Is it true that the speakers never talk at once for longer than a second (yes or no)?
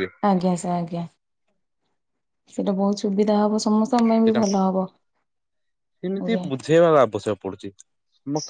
yes